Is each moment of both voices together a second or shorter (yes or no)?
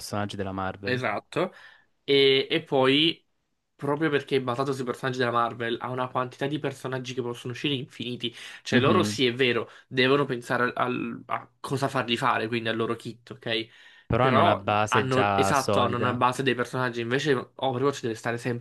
no